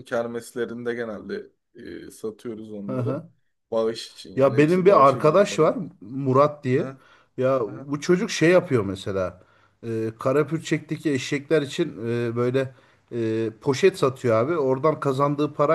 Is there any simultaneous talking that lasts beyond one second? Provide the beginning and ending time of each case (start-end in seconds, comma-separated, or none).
4.3-5.8